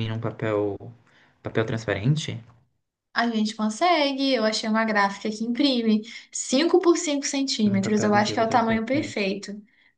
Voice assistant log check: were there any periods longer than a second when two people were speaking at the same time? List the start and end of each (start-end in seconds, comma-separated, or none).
7.7-9.3